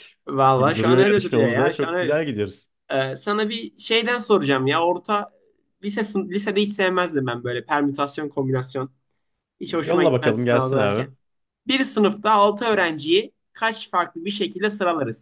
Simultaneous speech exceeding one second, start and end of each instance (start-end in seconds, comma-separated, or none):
0.6-2.2, 9.7-11.1